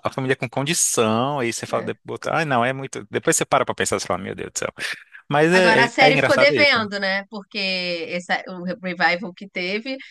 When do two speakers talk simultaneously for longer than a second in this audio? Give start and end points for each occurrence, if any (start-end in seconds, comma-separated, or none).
5.5-6.9